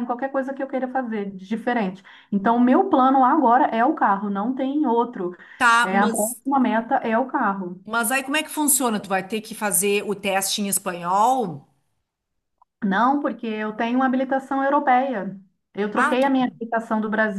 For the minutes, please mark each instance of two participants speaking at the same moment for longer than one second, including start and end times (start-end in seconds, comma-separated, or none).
none